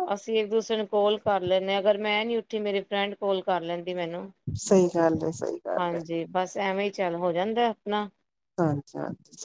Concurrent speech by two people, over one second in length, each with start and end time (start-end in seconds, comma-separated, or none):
none